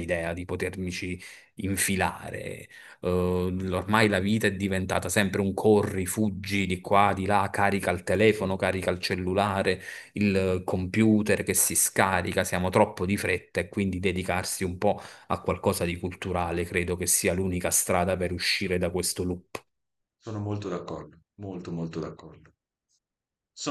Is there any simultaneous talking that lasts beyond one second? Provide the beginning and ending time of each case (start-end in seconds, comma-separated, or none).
none